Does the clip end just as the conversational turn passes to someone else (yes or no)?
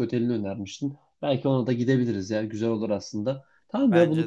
no